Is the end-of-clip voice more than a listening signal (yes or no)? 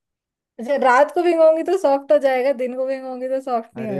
yes